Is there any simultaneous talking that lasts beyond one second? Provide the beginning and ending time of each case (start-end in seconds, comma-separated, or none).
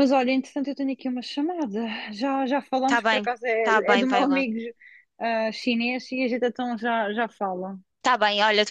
2.8-4.4